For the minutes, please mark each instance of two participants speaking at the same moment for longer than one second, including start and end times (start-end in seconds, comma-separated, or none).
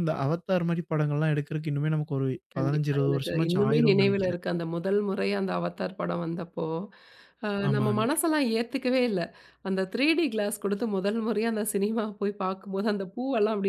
2.5-4.4